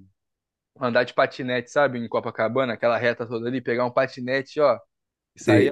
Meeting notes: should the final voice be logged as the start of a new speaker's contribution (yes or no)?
yes